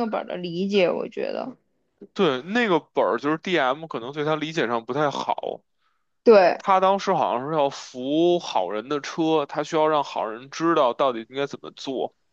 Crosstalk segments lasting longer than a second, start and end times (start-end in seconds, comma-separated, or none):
none